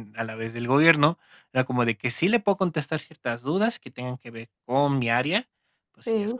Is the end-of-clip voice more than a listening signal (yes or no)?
no